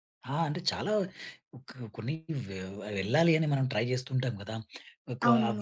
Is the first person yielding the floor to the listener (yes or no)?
no